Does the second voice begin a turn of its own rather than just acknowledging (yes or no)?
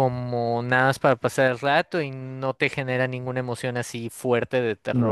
yes